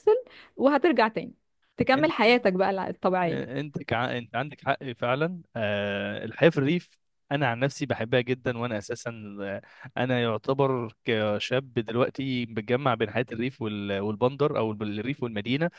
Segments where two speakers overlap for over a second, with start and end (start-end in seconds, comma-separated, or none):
none